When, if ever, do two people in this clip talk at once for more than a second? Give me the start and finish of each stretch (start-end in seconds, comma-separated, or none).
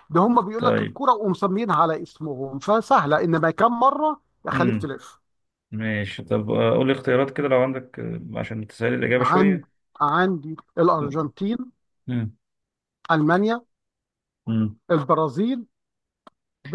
none